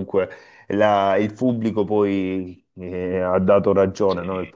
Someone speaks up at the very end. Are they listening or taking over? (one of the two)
listening